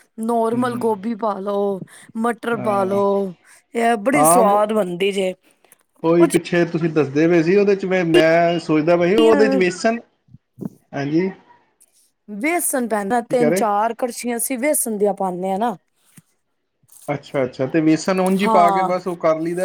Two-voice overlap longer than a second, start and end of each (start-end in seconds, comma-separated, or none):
none